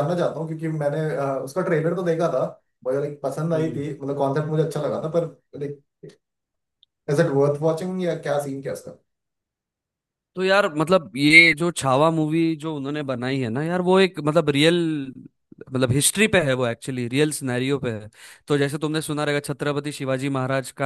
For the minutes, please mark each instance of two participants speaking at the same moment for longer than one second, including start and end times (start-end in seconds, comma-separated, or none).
none